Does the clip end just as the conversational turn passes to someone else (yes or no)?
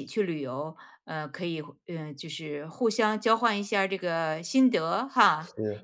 no